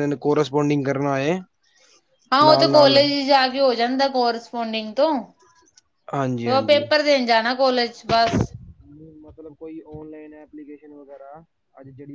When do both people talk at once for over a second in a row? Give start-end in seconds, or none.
none